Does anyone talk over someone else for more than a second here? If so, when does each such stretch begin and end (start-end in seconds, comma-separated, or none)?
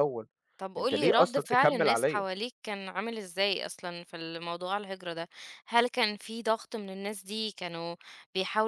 0.8-2.2